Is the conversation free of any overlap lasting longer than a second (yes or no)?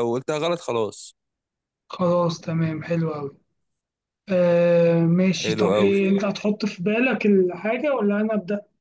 yes